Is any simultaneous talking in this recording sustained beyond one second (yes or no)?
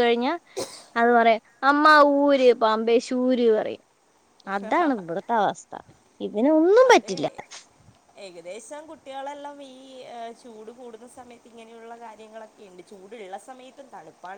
no